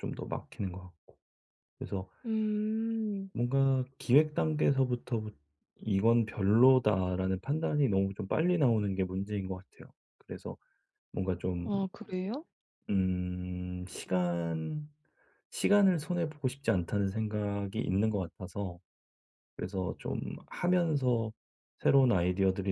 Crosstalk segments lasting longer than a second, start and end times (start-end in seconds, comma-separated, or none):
none